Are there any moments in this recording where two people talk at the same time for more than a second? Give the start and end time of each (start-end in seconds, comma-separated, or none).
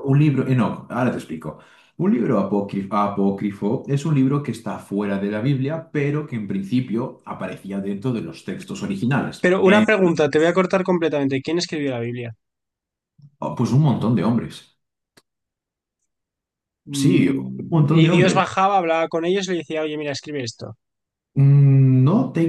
16.9-18.6